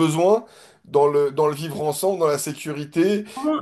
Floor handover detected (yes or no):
yes